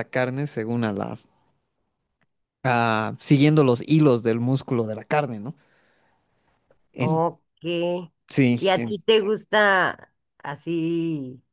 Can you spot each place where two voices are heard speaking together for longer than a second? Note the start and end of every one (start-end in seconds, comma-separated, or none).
none